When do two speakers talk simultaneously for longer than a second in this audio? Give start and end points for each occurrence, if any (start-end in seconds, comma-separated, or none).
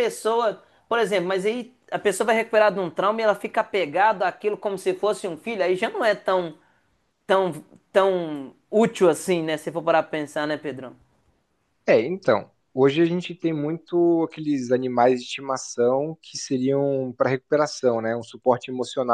none